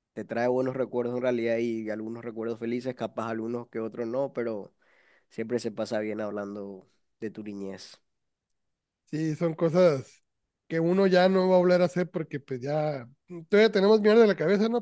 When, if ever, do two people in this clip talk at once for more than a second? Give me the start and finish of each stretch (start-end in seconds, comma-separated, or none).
none